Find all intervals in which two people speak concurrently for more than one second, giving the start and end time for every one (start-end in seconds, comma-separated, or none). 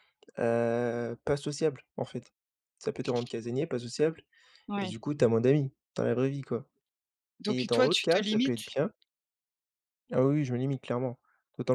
7.5-8.7